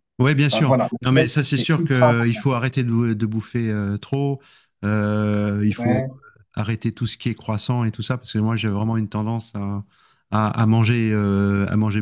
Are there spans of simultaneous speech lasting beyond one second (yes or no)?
yes